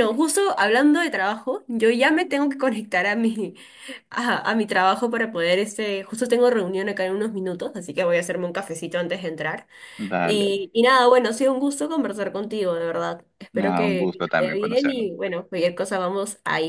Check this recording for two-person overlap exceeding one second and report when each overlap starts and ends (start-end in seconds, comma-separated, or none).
13.5-15.1